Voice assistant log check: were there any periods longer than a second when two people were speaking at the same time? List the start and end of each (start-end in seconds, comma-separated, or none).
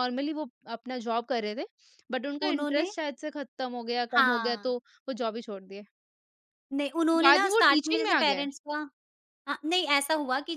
7.1-8.4